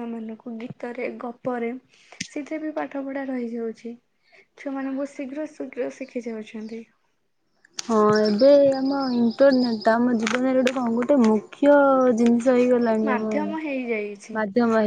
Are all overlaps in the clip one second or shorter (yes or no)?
no